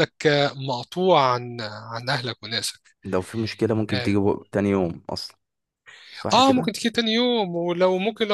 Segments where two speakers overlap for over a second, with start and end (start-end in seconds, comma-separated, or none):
none